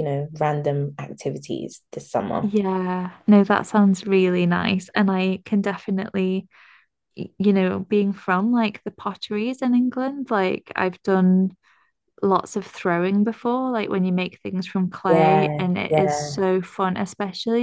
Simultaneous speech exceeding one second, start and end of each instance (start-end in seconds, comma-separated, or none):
15.1-16.4